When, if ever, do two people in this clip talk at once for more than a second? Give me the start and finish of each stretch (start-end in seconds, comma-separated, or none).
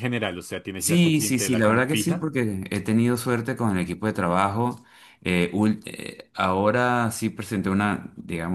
0.8-2.3